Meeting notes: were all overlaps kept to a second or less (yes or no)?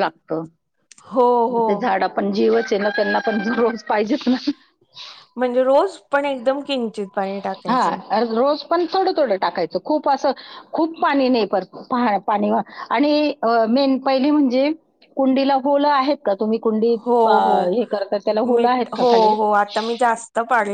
yes